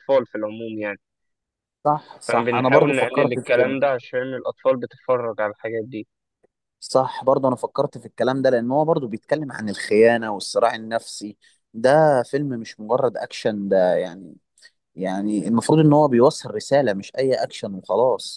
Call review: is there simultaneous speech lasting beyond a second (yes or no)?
yes